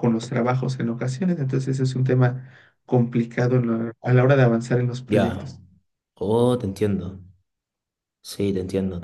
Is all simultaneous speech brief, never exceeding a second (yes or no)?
yes